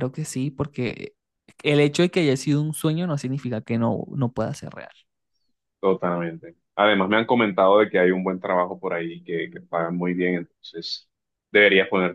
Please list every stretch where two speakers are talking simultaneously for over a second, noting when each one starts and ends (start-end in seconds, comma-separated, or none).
none